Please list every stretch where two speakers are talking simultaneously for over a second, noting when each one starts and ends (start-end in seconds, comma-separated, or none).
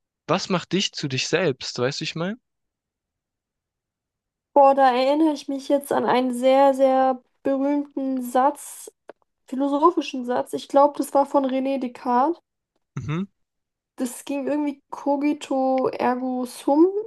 none